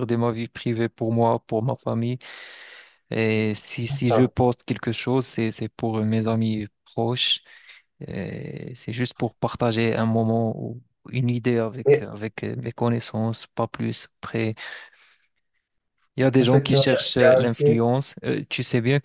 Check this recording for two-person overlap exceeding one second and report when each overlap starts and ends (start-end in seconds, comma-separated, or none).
16.4-17.6